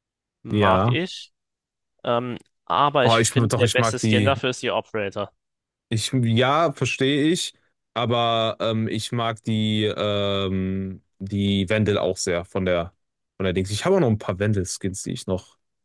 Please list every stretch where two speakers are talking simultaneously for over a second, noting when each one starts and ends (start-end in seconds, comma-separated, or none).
3.0-4.4